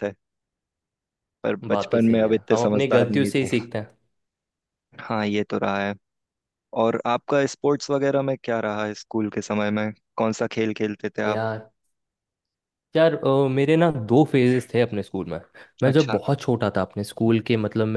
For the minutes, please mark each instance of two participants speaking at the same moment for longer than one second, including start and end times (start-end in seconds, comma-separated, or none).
1.7-3.3